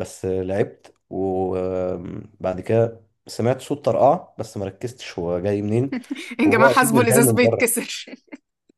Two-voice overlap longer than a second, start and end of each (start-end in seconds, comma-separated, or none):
6.4-7.8